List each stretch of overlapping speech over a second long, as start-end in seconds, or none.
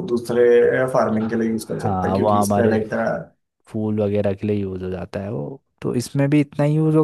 1.2-2.8